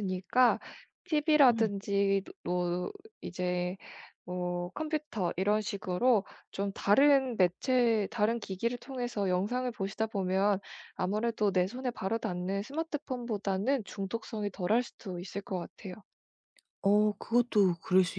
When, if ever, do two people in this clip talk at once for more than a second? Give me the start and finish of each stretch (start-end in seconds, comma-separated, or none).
none